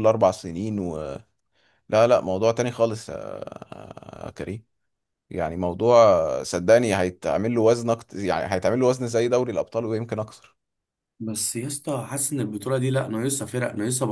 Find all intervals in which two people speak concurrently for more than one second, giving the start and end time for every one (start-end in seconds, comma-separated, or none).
none